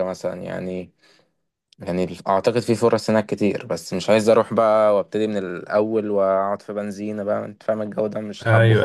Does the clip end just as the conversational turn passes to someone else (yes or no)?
yes